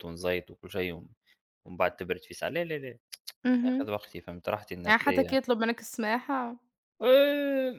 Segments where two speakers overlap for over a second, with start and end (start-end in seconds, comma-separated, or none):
none